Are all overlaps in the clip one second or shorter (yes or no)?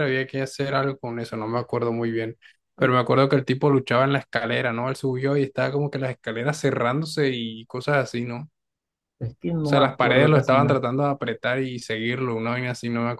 no